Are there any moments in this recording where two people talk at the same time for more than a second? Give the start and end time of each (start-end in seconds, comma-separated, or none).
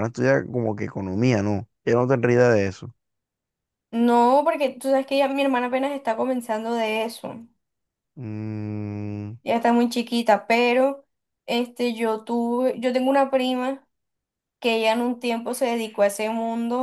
none